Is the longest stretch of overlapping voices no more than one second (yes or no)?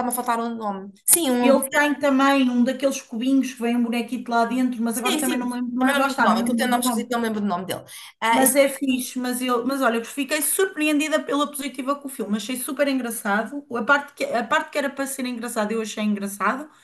no